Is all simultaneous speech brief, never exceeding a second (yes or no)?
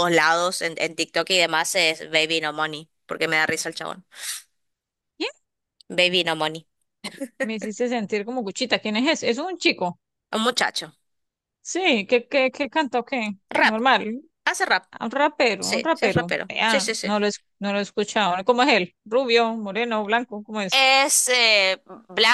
no